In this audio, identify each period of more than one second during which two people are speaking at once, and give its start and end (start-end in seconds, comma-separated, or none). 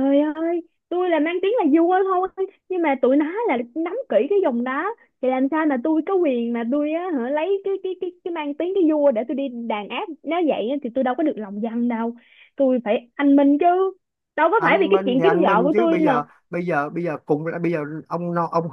14.6-16.2